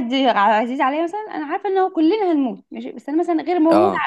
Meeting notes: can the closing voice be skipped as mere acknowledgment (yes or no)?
yes